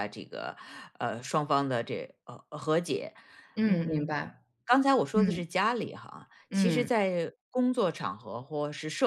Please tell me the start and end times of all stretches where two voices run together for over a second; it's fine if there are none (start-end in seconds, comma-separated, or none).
none